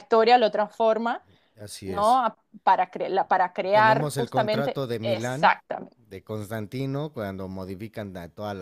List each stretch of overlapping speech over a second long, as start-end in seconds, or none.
3.7-5.6